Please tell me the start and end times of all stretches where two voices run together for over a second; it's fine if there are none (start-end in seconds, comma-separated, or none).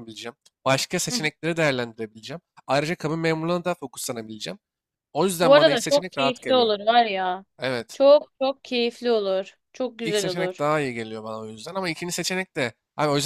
5.4-6.7